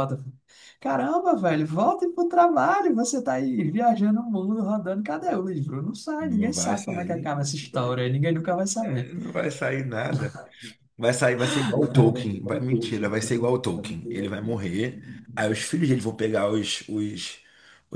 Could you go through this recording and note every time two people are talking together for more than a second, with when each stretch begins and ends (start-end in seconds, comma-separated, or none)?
6.2-7.9